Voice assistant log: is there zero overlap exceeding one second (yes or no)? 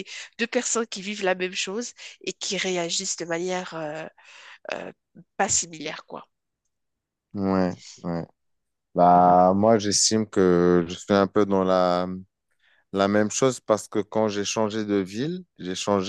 yes